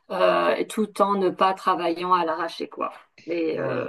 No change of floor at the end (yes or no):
yes